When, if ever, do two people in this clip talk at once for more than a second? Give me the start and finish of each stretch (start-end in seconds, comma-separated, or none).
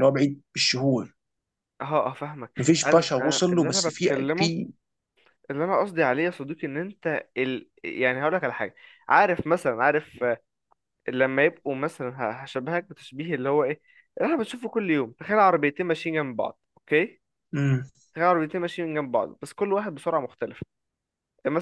2.6-4.5